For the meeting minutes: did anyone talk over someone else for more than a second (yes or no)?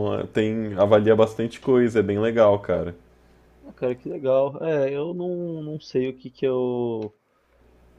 no